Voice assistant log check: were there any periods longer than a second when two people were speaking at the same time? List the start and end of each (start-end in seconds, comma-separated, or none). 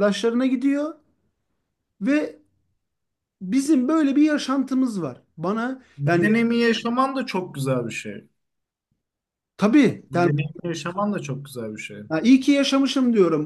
none